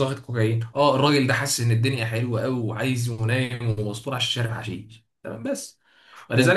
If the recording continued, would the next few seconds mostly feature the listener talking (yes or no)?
no